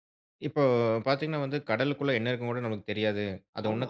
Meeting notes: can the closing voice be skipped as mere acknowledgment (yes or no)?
yes